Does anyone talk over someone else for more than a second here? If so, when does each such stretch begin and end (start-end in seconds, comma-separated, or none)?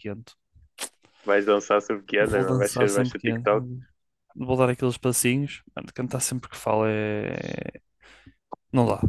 2.2-3.7